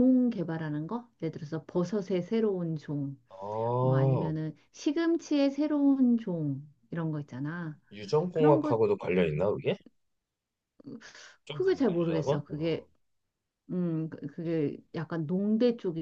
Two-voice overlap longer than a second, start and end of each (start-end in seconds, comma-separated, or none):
11.5-12.9